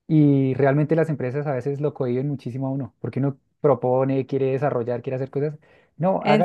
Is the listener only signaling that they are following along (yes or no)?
yes